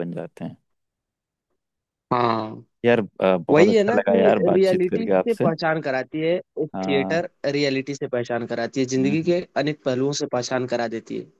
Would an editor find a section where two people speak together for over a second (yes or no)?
yes